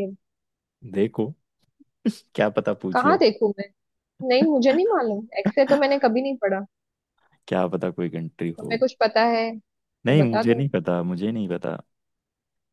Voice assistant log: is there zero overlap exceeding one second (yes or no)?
yes